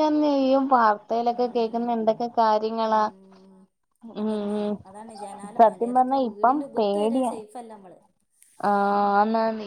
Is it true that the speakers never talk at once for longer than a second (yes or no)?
no